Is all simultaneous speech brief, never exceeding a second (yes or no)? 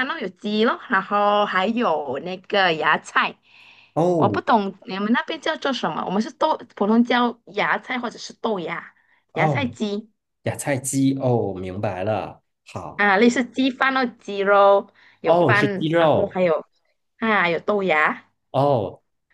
no